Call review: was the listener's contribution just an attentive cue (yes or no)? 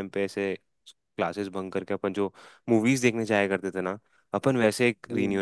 yes